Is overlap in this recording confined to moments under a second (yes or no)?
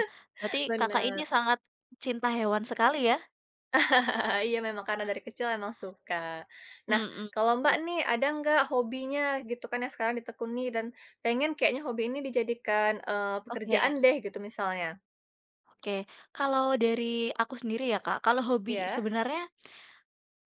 yes